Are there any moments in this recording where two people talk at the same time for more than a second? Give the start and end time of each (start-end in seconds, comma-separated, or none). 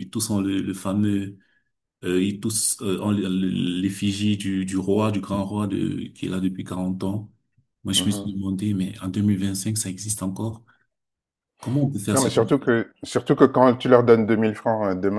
none